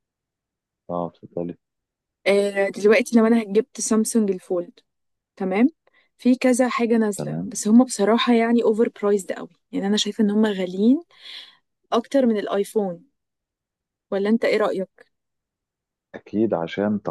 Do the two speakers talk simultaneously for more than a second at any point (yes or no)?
no